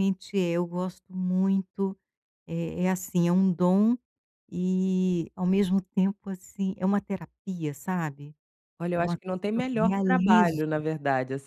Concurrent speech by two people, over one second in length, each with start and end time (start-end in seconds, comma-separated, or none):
8.9-10.6